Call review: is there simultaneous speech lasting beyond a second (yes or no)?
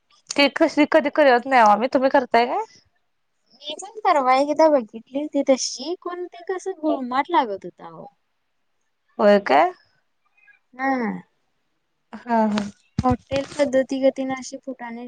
no